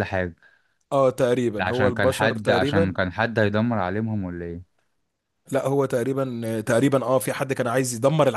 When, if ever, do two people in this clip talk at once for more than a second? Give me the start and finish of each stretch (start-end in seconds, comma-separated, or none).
1.6-3.0